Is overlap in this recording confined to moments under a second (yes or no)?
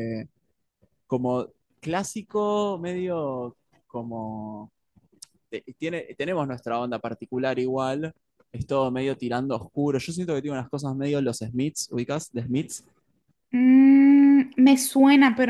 yes